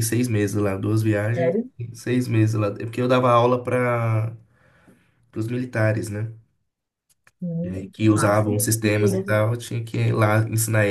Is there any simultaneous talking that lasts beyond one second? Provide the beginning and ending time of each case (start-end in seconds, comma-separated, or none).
7.6-9.4